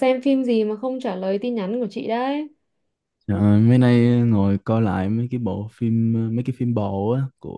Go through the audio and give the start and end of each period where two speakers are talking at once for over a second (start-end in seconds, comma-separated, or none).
none